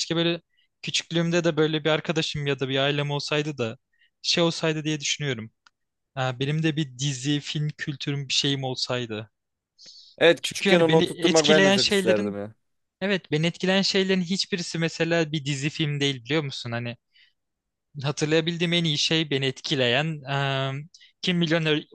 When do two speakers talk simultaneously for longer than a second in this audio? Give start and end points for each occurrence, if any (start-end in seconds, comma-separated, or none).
10.4-12.4